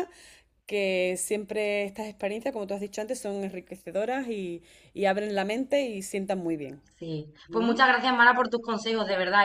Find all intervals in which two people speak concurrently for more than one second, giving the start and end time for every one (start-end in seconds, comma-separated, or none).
none